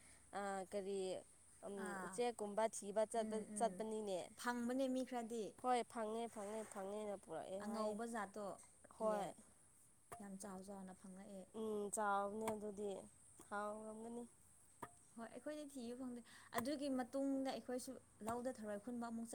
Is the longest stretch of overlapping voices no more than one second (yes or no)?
yes